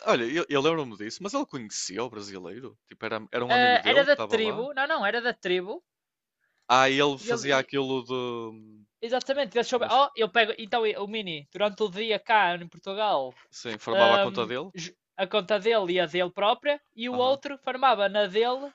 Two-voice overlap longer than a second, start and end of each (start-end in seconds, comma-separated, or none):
3.5-4.7